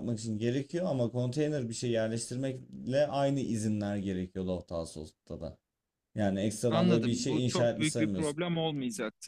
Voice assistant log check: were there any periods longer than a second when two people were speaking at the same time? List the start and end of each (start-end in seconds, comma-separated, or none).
6.7-8.4